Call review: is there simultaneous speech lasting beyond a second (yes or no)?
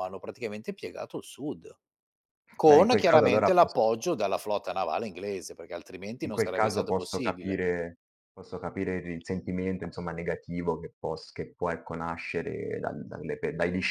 yes